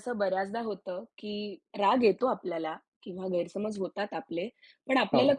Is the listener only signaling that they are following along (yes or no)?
yes